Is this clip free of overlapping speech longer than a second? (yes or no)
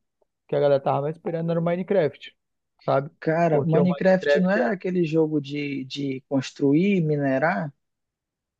no